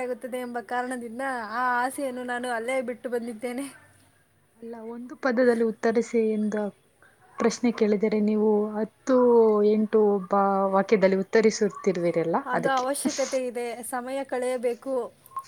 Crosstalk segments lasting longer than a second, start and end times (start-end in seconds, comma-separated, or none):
none